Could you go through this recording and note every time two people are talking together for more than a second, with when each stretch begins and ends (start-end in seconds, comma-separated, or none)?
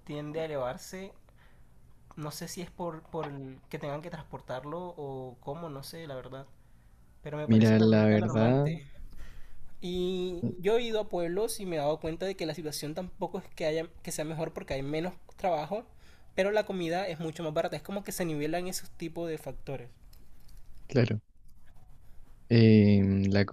7.5-8.7